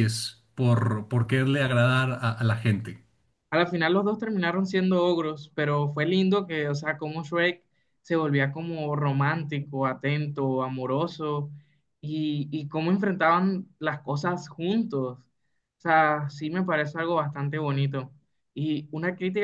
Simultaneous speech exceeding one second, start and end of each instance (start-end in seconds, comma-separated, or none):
none